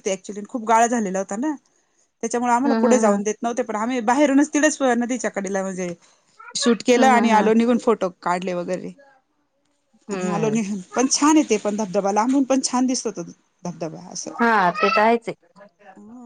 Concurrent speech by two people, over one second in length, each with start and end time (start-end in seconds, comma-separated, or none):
none